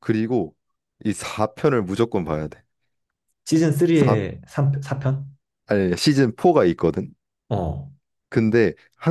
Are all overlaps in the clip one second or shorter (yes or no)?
yes